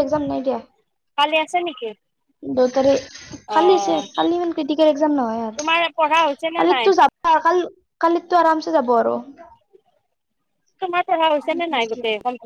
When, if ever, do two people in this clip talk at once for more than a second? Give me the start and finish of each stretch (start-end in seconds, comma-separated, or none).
none